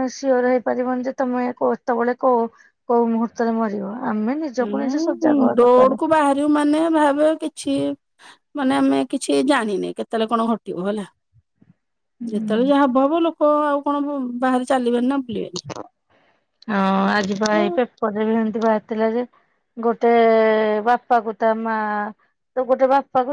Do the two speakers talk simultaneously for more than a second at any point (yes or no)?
no